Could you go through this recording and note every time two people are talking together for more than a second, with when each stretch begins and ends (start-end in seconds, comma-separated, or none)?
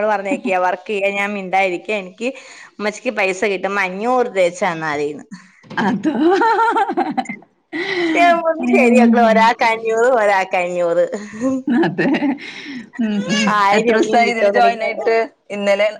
13.8-15.1